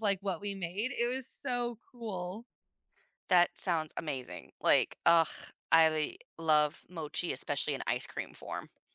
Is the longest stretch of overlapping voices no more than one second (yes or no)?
yes